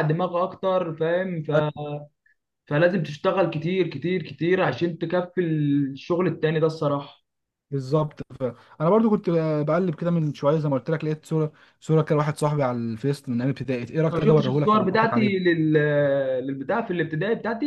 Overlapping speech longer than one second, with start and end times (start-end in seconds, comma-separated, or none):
14.0-15.4